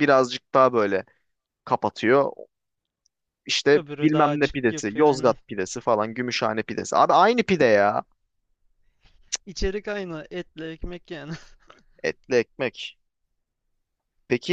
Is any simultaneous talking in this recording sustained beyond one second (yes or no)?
yes